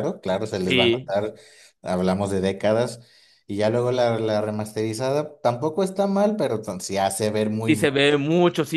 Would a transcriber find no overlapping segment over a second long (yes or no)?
yes